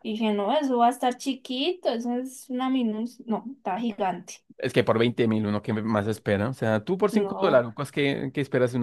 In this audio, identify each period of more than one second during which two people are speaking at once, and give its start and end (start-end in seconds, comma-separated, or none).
none